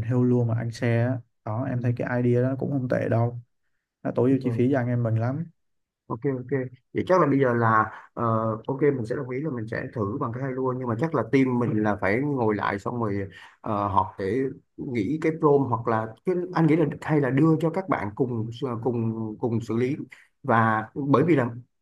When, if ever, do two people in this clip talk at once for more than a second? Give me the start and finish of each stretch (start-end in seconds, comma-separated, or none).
none